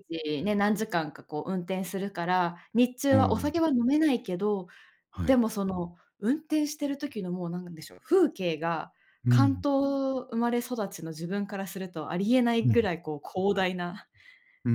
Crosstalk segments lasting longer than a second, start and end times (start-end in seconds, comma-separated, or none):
none